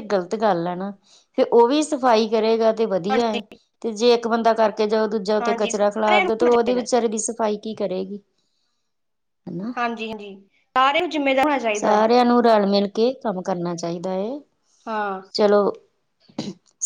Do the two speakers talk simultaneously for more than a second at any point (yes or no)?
yes